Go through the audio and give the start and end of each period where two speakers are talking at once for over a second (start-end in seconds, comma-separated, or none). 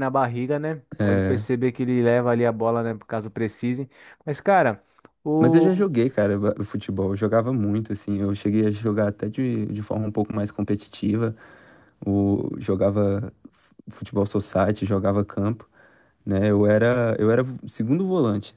none